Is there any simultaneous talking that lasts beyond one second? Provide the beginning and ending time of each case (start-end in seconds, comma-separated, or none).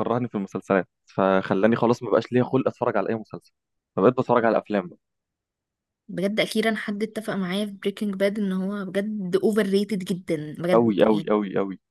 none